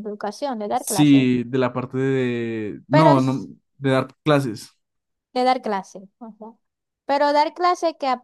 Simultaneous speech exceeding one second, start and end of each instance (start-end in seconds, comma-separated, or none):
none